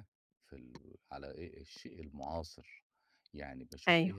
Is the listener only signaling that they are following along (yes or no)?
yes